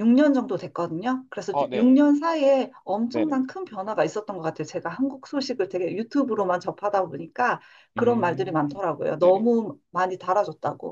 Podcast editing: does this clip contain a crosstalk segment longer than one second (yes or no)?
yes